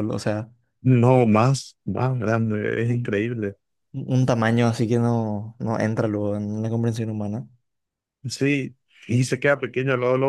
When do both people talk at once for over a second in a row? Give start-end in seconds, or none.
none